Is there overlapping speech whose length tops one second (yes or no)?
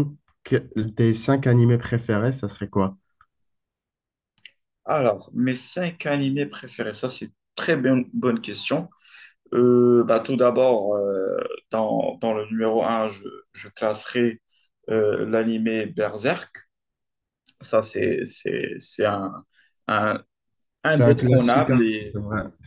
yes